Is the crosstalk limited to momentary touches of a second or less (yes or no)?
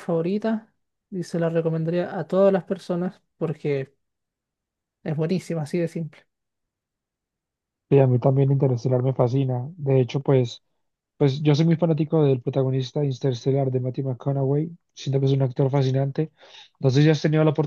yes